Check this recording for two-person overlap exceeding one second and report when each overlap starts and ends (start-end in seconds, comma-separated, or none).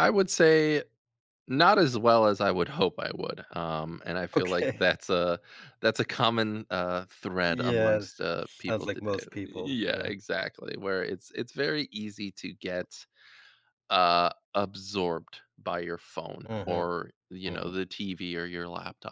8.7-10.1